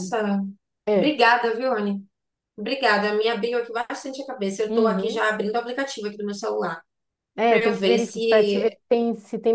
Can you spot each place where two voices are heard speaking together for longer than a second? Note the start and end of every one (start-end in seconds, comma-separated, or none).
7.5-8.8